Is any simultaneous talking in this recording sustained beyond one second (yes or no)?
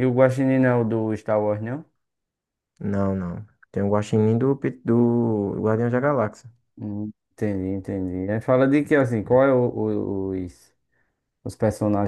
no